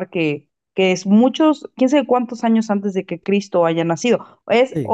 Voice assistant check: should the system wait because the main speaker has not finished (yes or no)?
yes